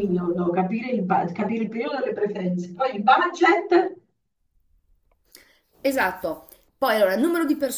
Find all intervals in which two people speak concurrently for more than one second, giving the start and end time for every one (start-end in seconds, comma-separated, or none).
none